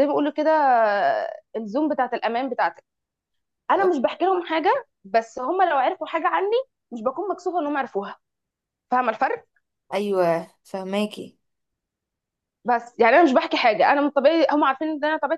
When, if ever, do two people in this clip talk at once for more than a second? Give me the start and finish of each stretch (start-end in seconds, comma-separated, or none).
none